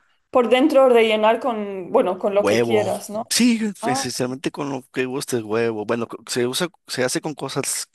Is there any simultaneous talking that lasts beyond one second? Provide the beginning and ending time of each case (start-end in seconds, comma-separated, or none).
none